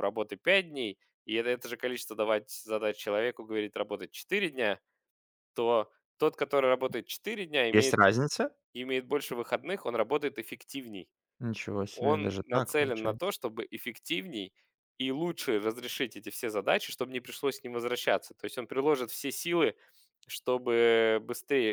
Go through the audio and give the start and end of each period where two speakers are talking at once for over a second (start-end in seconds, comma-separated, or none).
11.9-13.3